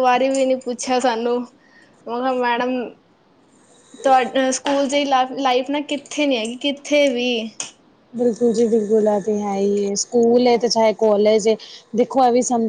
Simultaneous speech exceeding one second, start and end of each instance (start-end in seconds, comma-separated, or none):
none